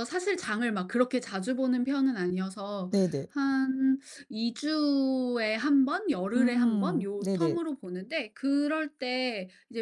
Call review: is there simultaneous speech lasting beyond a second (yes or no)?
yes